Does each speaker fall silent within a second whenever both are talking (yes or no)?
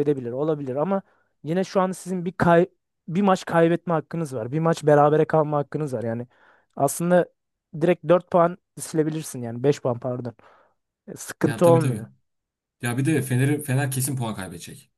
yes